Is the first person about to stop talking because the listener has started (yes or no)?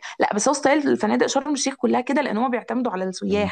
yes